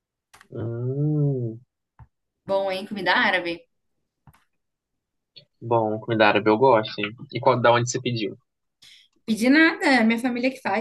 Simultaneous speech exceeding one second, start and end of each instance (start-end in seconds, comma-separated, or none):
none